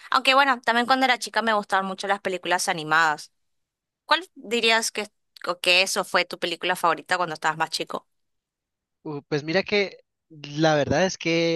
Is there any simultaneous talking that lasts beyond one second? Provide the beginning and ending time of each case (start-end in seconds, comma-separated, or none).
none